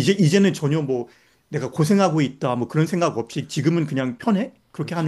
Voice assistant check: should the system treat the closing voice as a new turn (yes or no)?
yes